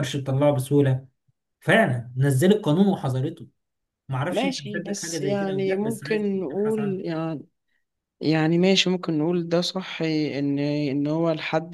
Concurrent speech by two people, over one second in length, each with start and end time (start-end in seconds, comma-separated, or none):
4.3-7.0